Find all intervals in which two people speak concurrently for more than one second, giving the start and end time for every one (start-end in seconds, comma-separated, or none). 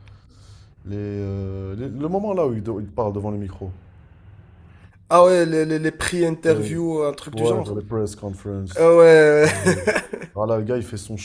none